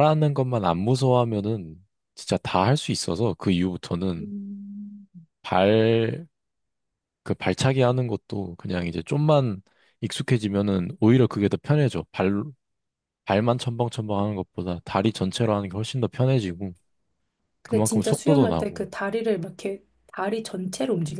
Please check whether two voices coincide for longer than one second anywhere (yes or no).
yes